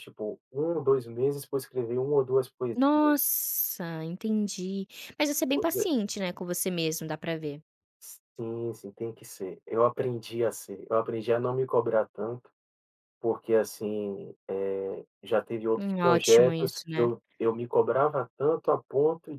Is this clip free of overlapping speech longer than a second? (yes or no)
no